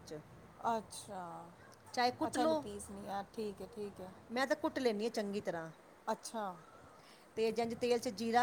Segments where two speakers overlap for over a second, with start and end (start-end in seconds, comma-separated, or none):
none